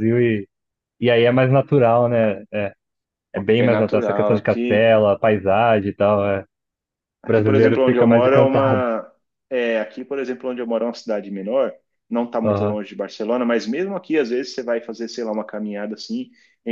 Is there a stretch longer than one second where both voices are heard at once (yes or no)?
yes